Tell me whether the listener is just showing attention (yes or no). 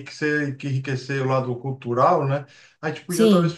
yes